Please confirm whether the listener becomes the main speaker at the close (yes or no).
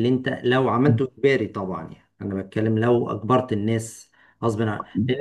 no